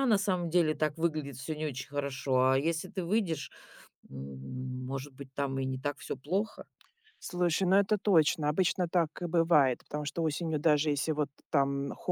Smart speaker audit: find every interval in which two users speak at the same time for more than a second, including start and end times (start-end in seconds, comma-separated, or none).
none